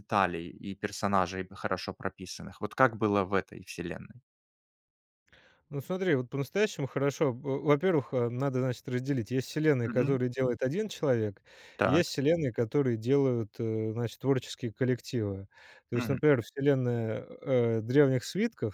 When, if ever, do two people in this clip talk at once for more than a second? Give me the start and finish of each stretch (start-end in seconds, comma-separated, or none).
none